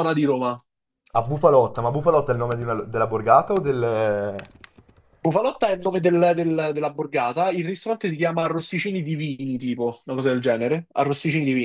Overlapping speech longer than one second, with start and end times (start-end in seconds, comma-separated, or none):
none